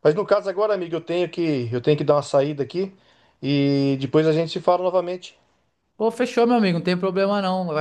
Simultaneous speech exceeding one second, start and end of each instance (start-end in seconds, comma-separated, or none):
none